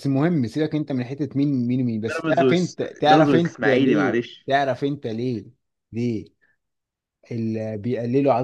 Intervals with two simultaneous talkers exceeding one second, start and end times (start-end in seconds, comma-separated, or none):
2.1-4.5